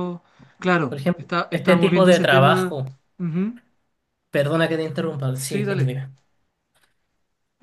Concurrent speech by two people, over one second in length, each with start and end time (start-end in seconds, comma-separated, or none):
0.9-2.8